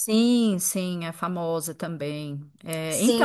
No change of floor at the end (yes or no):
no